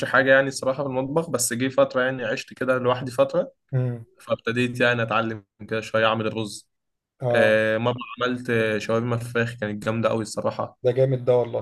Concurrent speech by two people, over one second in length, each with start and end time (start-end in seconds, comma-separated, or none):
none